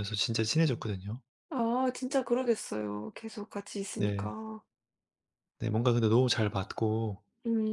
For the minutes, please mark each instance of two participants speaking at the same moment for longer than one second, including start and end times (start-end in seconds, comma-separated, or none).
none